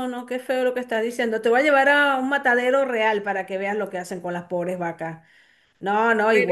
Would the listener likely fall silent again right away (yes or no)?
yes